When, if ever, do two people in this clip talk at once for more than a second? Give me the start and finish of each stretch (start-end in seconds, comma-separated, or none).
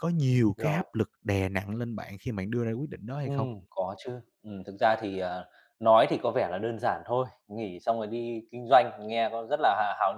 none